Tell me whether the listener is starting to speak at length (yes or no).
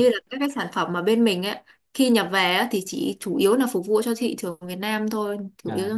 yes